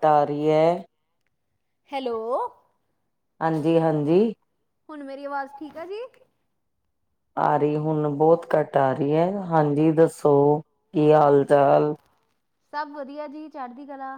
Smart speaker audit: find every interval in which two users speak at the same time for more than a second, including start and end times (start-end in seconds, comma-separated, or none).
none